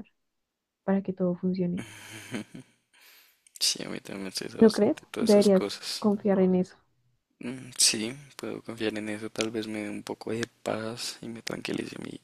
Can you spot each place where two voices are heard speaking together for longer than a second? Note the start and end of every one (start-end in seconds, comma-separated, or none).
4.5-6.0